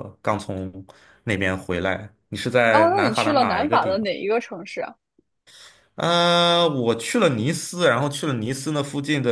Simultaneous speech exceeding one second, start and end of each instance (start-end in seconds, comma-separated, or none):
2.7-4.1